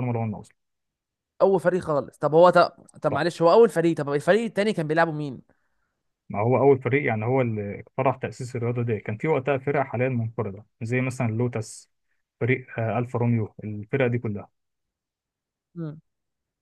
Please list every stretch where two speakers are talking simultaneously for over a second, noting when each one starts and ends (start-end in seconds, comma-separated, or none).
none